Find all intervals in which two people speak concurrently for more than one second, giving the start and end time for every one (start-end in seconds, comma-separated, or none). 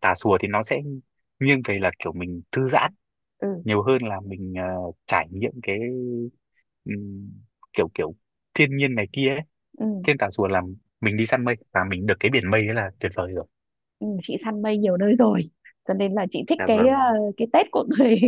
none